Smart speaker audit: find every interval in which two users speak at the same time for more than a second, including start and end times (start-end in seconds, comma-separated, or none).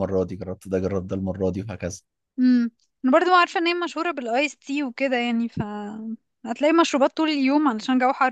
none